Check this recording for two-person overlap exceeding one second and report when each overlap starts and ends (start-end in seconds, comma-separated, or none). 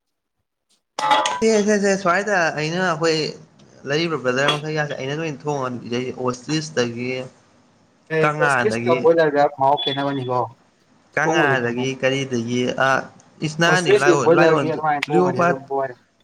13.7-15.6